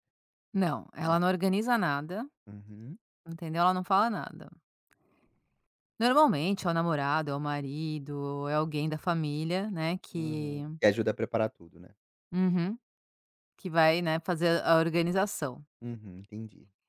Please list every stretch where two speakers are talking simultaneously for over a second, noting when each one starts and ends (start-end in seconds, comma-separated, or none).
none